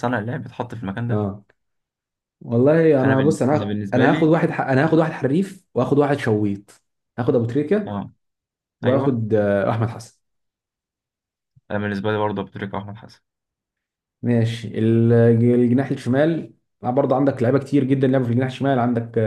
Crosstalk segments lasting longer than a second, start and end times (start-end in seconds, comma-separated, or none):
3.0-4.4